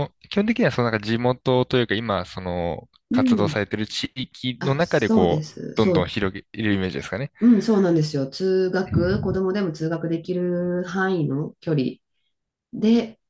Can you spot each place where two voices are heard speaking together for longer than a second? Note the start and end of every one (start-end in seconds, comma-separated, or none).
4.6-6.2